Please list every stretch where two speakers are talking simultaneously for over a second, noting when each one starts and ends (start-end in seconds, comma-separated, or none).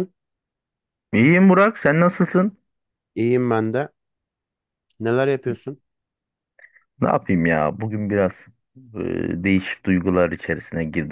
none